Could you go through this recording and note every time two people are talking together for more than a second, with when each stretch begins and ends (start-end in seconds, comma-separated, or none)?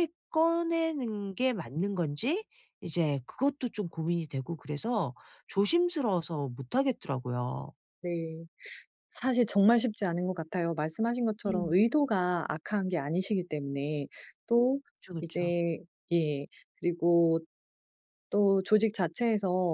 none